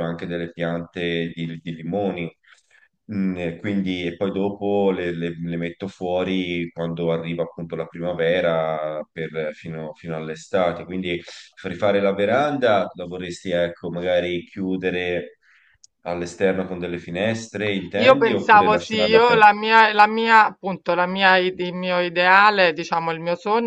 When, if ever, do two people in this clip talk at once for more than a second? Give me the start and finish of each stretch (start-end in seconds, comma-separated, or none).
18.0-19.5